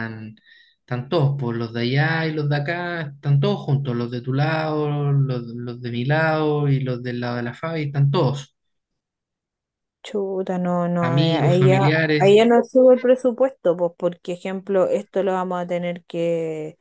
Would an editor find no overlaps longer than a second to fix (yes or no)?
no